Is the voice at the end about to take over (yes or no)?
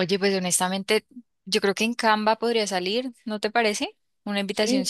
no